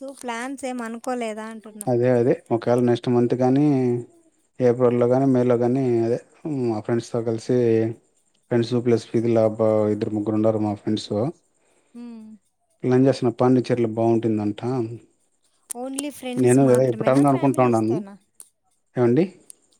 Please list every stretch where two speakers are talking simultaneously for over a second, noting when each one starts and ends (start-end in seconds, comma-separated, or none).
16.4-18.0